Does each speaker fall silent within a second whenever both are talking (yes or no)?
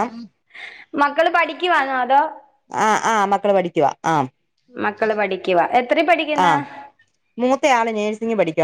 yes